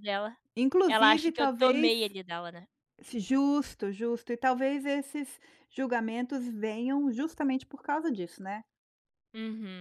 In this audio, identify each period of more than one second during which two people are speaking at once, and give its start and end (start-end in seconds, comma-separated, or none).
0.9-2.1